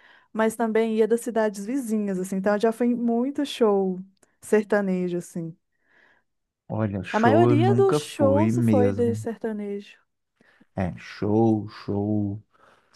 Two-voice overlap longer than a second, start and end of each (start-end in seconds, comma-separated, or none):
7.1-9.3